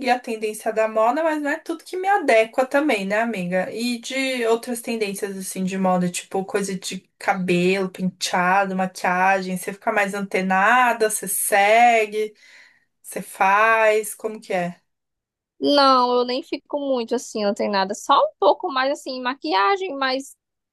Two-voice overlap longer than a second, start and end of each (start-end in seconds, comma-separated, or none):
none